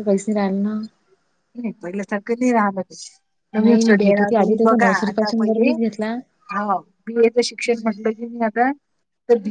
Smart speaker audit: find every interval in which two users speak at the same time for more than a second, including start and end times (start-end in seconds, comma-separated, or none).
3.6-5.7